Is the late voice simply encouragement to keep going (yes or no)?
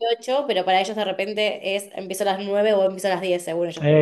no